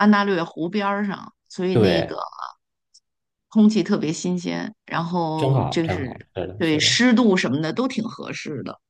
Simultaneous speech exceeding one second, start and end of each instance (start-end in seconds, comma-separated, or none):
5.3-7.0